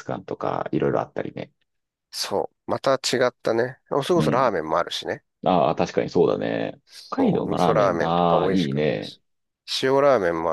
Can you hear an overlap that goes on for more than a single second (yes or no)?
yes